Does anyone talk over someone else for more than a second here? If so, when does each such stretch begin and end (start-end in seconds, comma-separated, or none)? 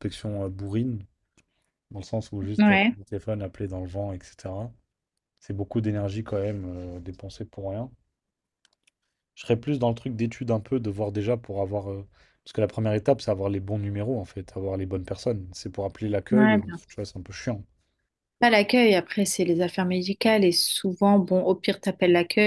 none